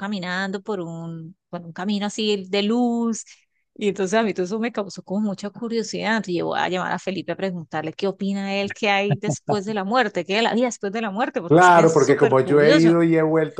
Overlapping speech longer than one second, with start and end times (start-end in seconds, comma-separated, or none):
11.5-12.9